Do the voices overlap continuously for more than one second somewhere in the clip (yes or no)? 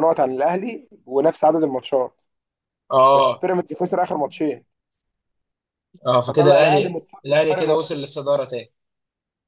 yes